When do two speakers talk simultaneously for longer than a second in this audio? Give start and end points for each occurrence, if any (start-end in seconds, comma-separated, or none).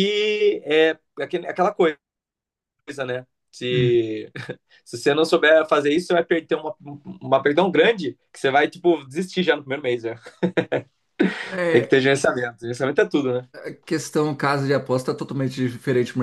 none